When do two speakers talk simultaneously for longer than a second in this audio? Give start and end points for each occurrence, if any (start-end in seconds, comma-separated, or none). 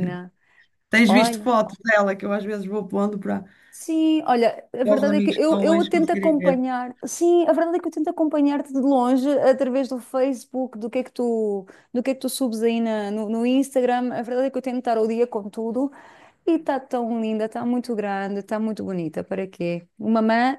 4.8-6.6